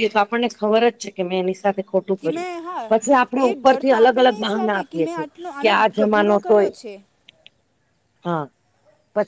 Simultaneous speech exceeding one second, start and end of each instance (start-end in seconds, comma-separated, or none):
3.3-6.7